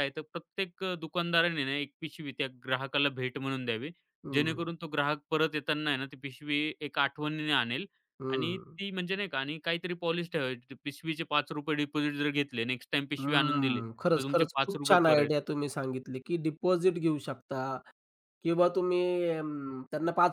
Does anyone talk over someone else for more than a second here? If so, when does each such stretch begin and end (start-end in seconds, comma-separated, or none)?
13.2-15.3